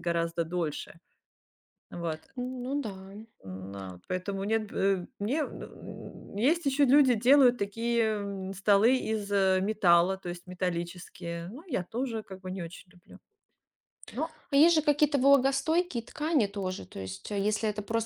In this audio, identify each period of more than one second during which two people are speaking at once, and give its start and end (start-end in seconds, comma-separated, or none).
none